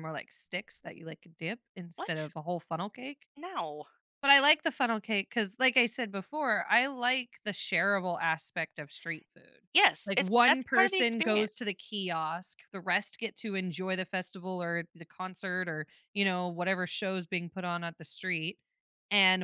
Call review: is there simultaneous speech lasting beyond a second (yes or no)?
yes